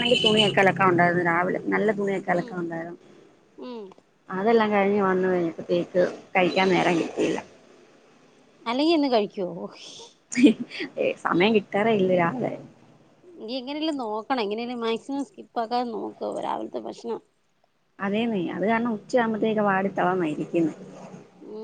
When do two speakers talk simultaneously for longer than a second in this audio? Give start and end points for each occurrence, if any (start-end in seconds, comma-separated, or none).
none